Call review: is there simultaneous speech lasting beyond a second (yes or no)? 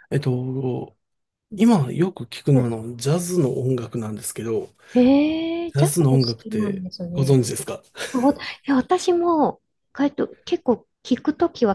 yes